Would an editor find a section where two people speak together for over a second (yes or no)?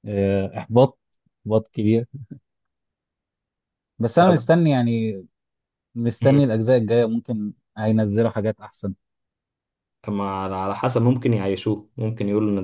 no